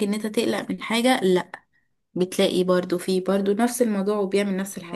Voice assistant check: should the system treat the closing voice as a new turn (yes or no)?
yes